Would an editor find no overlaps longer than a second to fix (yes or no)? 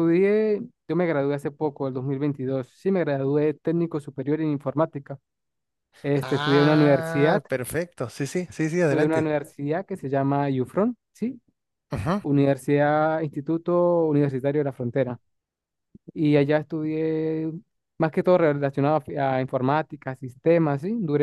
no